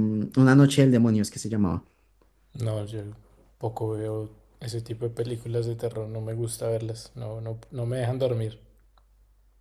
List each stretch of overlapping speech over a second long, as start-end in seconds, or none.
none